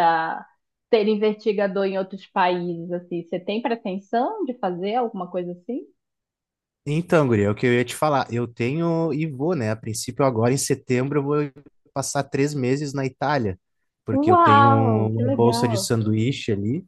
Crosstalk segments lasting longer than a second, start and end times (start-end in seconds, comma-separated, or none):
14.1-15.9